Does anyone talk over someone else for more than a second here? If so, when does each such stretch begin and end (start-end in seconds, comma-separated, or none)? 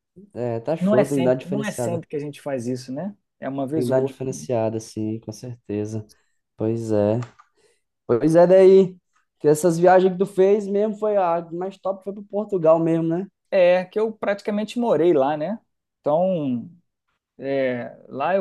0.8-2.0